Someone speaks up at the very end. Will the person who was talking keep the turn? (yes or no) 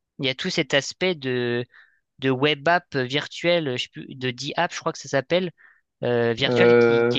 yes